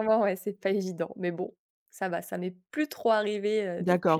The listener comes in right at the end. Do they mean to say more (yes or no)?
yes